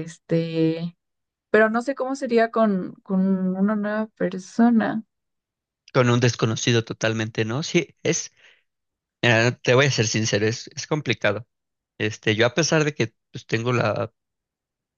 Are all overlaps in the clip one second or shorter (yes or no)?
yes